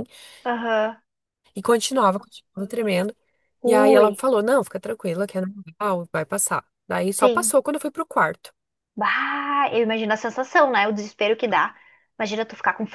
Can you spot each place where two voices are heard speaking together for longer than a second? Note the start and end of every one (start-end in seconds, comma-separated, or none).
none